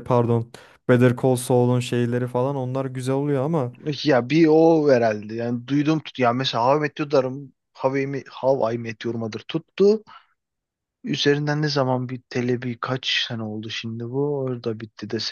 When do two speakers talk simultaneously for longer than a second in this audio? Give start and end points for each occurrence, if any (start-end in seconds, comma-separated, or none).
none